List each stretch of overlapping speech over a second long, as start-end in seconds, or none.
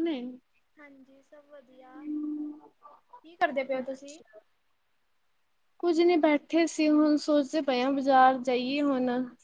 none